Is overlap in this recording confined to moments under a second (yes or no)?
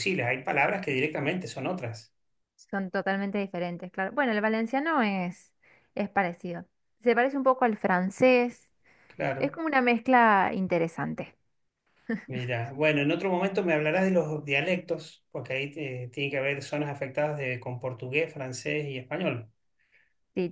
yes